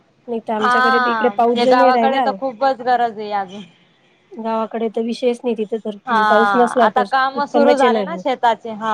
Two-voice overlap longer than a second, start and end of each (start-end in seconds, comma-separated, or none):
0.6-2.2